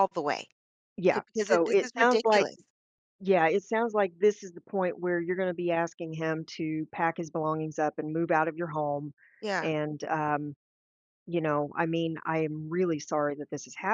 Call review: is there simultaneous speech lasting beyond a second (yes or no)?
yes